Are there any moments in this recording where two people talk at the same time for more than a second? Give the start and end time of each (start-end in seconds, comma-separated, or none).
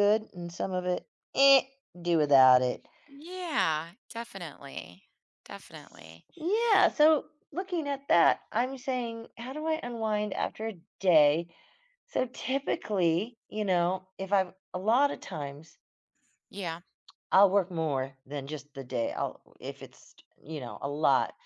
none